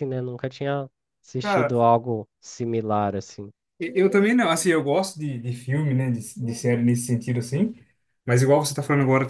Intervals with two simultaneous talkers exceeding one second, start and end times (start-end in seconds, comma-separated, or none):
none